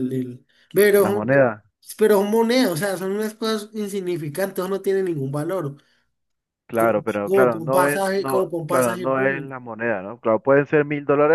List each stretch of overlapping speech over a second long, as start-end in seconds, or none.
6.8-9.5